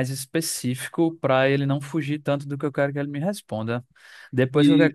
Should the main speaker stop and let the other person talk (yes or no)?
no